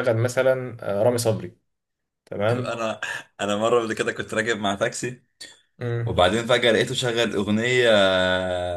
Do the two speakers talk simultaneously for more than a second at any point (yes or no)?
no